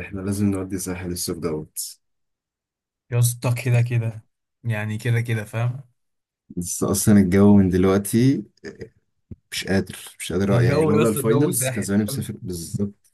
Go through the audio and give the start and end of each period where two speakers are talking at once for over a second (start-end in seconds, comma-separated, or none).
10.5-12.3